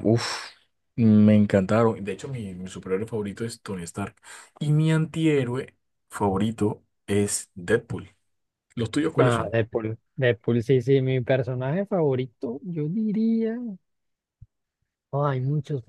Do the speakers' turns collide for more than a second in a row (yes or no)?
no